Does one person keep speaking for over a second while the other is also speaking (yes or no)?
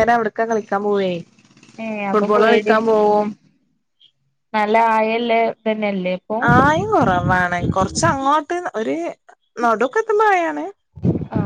no